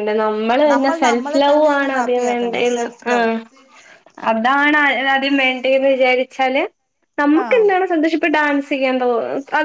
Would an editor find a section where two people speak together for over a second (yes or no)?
yes